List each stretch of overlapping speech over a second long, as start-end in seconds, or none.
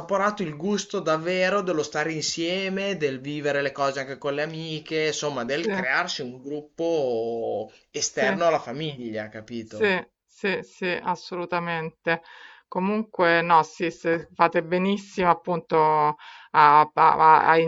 none